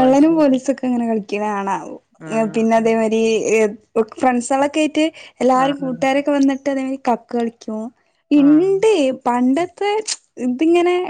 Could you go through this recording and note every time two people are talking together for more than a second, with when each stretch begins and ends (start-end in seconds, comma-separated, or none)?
none